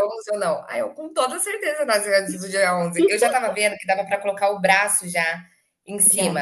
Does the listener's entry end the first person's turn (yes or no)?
no